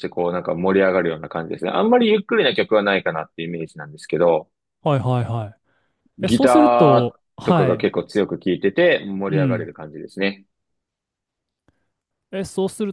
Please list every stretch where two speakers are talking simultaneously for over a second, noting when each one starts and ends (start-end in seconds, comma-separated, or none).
6.2-7.9